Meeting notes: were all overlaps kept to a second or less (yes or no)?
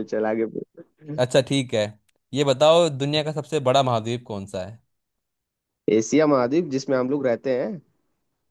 yes